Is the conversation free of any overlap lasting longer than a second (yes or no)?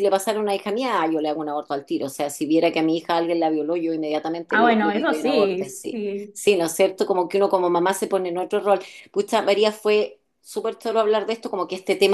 no